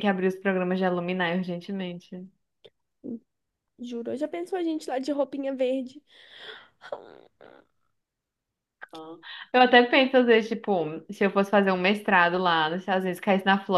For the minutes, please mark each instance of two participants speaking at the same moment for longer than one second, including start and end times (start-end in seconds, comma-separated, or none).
none